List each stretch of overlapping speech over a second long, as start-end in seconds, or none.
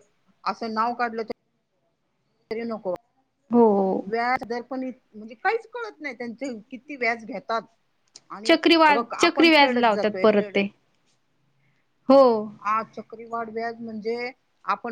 8.4-10.6